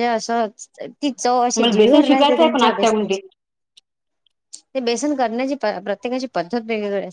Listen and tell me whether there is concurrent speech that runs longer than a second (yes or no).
yes